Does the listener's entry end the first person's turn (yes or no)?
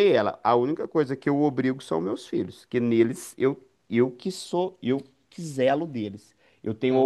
no